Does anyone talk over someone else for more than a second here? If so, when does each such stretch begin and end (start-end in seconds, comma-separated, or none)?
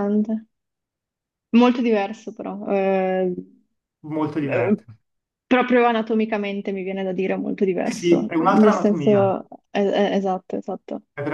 7.8-9.3